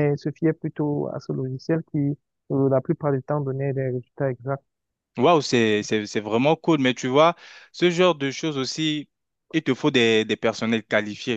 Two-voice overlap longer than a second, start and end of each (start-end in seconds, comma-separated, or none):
none